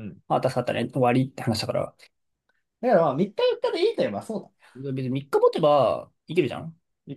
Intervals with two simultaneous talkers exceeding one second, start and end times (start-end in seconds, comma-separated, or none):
none